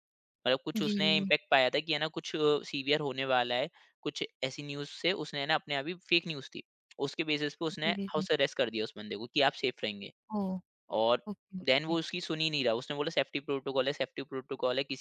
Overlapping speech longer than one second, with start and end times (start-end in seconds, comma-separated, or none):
none